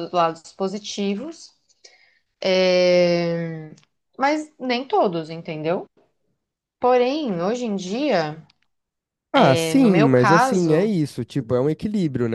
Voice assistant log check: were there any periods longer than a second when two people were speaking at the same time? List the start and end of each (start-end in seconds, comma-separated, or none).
9.4-10.9